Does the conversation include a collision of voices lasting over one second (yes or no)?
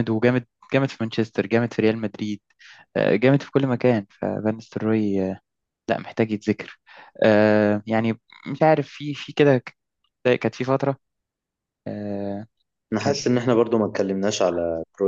no